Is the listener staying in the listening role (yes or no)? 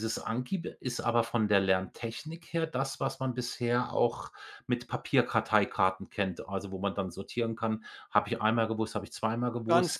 no